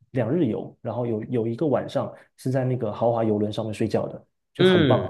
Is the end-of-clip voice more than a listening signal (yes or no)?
yes